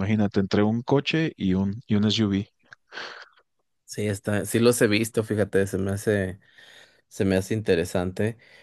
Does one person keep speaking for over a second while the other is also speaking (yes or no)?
no